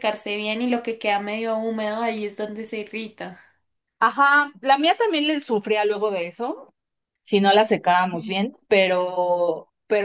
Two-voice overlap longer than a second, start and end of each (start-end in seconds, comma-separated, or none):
none